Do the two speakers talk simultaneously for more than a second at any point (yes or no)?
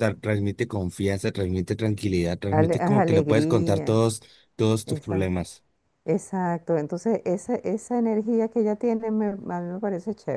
yes